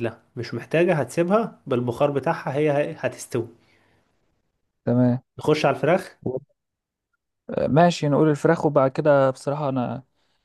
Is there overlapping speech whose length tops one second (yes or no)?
no